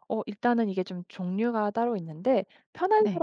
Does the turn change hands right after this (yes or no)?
no